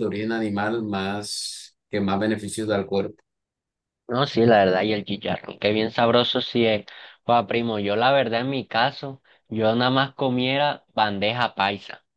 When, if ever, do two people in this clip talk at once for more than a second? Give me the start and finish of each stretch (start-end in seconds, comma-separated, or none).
none